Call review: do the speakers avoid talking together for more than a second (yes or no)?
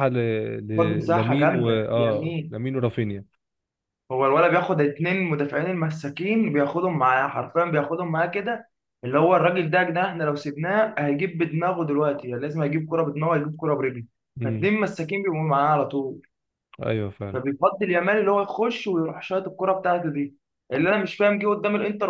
no